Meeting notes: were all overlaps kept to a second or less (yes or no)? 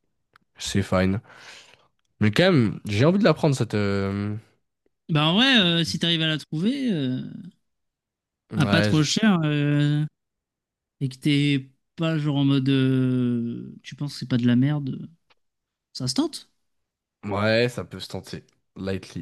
yes